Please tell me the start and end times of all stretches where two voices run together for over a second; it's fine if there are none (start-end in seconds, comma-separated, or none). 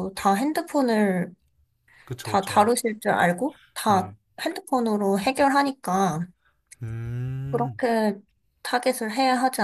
none